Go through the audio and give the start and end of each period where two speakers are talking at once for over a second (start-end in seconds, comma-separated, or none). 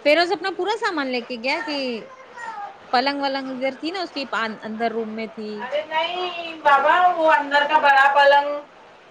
none